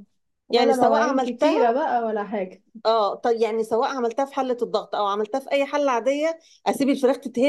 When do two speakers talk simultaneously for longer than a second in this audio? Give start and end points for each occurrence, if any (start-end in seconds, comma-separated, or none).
0.5-1.7